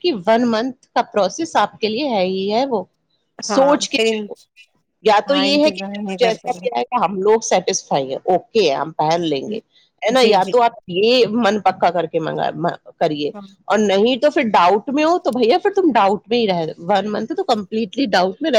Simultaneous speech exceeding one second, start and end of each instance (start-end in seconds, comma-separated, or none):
5.3-6.8